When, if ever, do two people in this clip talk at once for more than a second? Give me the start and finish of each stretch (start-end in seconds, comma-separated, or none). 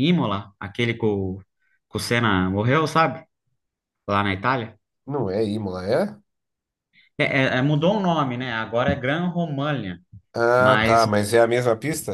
none